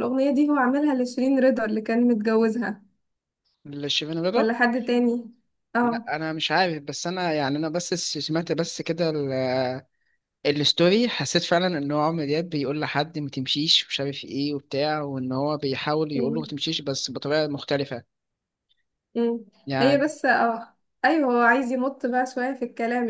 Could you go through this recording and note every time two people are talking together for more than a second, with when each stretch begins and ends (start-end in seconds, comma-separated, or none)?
none